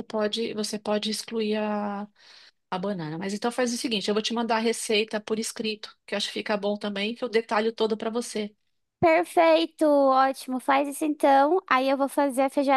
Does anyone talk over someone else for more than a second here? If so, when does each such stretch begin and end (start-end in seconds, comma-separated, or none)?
none